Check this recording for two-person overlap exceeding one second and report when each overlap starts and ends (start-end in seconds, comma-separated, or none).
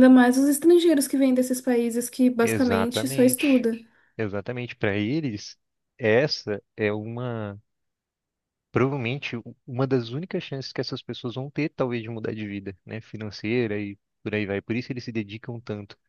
2.4-3.6